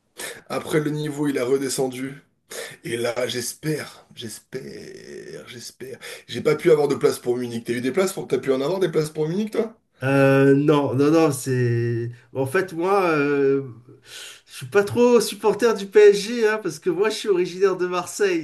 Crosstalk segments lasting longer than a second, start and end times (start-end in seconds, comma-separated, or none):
none